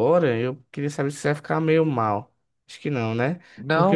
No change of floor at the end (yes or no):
yes